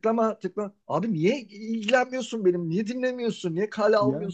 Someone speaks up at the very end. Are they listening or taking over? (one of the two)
listening